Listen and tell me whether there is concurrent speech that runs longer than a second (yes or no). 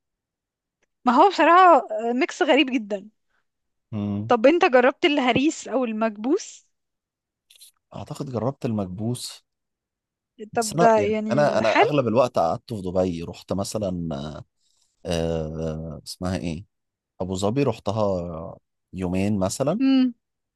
yes